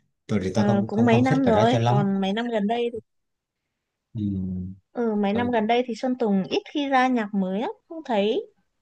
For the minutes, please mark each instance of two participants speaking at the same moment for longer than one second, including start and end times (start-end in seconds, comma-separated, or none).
0.6-2.0